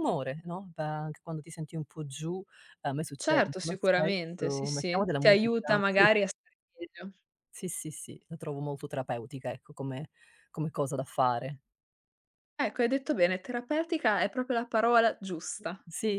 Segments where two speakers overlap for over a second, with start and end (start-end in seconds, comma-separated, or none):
3.2-6.1